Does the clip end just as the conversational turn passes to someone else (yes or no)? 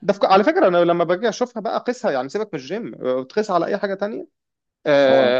no